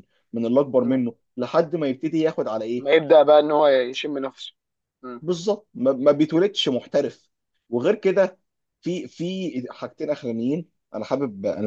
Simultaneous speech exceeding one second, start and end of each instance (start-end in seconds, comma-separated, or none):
none